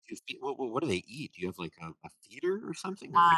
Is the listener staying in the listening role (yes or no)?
no